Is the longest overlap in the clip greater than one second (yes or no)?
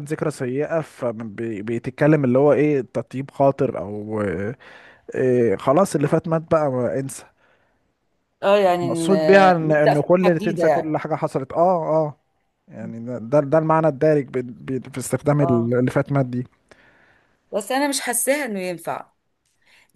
yes